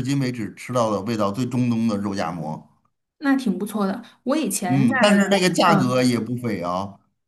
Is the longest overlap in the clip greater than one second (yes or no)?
yes